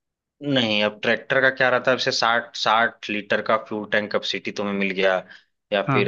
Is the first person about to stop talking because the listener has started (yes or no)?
no